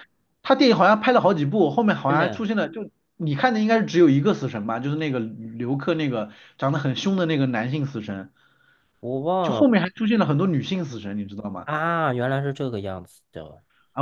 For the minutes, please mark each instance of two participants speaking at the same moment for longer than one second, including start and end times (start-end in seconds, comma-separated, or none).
none